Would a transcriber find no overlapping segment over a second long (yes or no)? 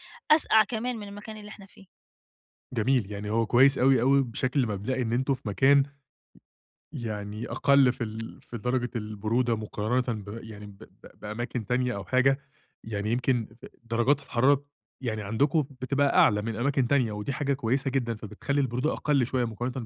yes